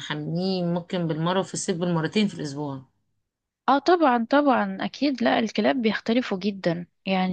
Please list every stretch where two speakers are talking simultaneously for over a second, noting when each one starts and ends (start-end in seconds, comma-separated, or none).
none